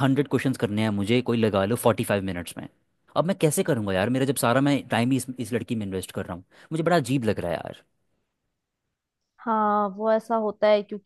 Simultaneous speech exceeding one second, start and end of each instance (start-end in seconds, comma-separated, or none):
none